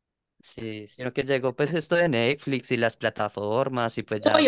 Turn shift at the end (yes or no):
yes